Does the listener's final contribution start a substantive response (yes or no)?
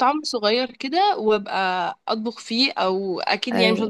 no